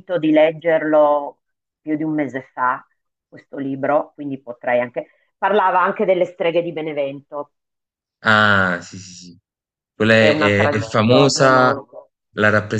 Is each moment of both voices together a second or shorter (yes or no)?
no